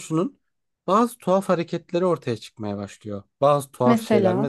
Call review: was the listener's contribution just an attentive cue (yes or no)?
yes